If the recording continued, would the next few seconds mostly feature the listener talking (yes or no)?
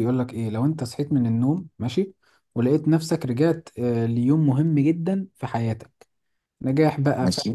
no